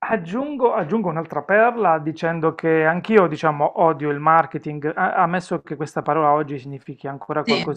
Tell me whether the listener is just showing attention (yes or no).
yes